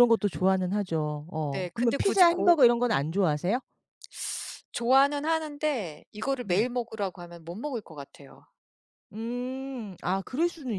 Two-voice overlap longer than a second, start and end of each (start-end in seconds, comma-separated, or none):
1.5-3.1